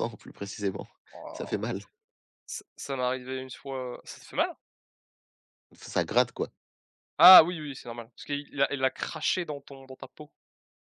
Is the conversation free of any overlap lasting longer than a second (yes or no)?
yes